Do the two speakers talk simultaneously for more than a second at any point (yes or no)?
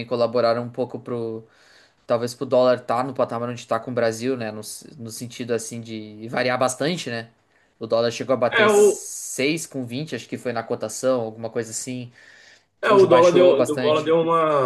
yes